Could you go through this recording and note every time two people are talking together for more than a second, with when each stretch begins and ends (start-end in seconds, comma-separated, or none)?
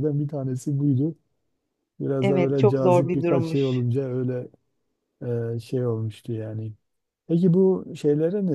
2.2-3.8